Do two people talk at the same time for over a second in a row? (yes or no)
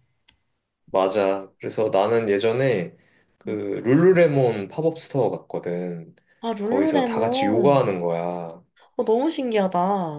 yes